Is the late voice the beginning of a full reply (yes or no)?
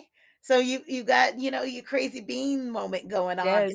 yes